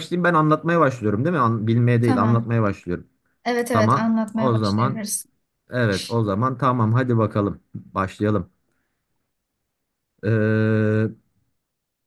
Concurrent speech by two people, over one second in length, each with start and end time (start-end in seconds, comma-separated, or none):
3.7-5.0